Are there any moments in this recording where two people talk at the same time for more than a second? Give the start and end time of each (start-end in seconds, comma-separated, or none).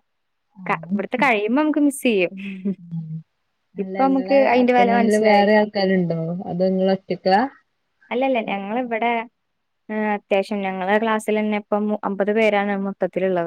3.8-5.5